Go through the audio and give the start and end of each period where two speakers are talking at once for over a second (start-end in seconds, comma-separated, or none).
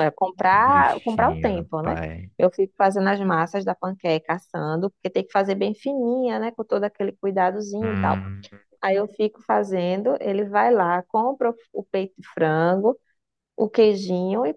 0.5-2.0